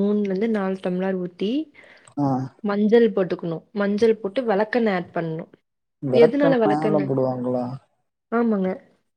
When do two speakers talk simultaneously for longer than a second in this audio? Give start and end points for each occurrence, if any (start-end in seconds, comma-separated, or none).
none